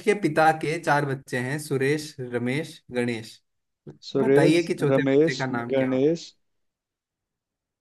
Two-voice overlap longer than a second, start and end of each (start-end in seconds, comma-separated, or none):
4.2-6.1